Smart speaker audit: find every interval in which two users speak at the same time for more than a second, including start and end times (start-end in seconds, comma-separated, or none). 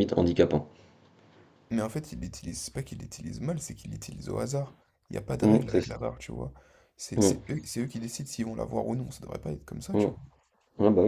none